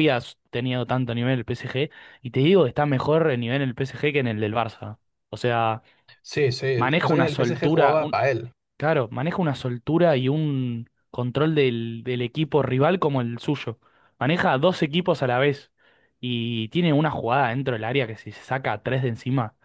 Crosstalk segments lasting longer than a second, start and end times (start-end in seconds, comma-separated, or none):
6.8-8.0